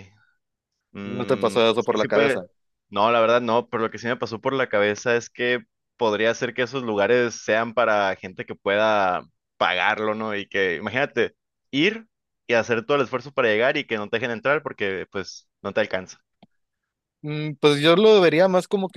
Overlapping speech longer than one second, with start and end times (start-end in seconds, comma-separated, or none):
1.0-2.4